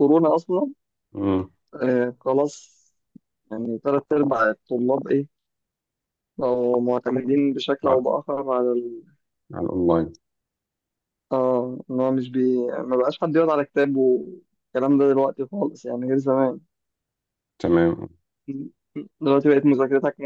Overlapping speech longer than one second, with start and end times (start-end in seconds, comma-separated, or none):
none